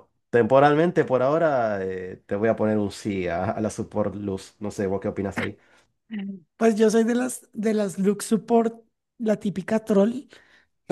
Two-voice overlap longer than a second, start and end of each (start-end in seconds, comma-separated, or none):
none